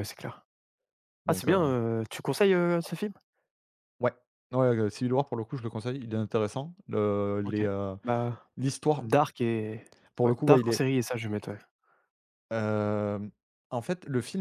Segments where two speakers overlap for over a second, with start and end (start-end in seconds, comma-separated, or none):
none